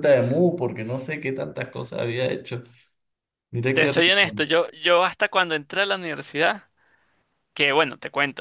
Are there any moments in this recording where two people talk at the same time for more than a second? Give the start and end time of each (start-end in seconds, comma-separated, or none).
none